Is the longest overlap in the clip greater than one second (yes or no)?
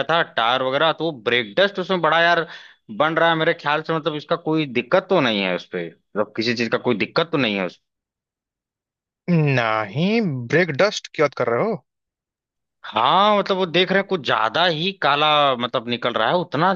no